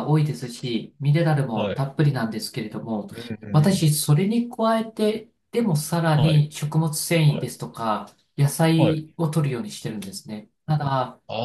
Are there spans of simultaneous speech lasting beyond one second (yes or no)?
no